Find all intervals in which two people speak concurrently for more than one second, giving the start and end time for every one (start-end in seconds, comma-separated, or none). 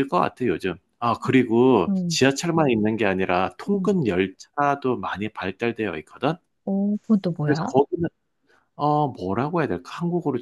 none